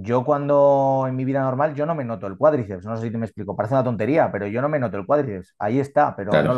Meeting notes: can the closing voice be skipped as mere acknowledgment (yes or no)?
yes